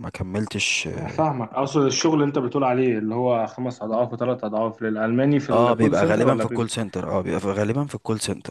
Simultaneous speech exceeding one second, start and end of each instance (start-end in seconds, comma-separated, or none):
5.5-6.7